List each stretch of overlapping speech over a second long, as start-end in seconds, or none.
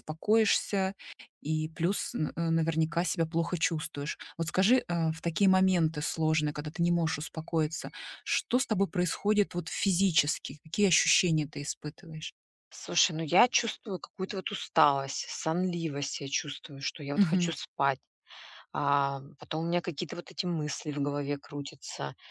none